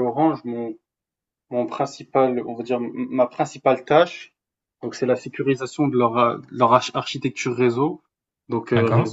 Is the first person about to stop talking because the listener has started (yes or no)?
no